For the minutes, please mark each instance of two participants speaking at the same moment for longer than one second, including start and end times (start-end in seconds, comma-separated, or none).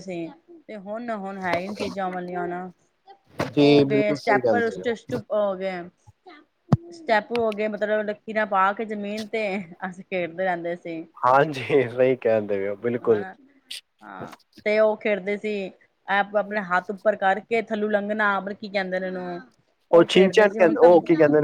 3.6-4.9